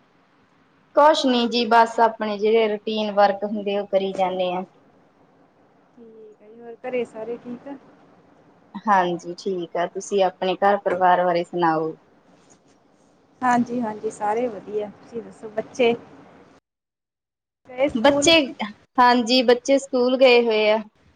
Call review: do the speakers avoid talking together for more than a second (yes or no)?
yes